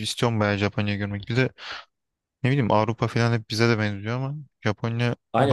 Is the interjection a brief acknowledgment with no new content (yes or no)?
no